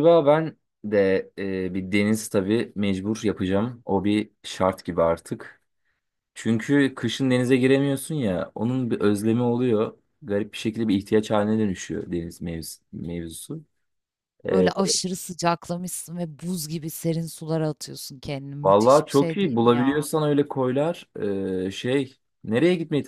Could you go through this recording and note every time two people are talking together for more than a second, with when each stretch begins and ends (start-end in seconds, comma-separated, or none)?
18.6-20.1